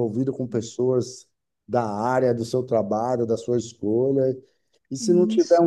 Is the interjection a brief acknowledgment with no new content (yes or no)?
yes